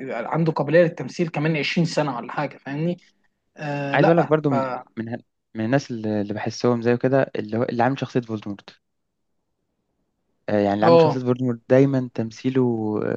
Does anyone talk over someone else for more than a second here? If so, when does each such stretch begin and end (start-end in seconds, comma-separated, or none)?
none